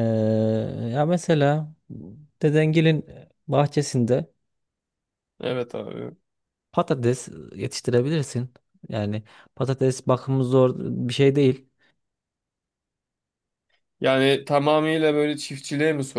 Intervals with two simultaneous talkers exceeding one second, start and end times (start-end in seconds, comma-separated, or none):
none